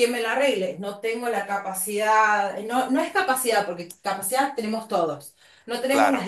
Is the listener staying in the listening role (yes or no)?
yes